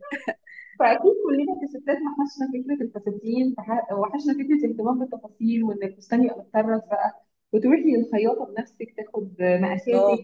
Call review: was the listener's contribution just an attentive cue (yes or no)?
yes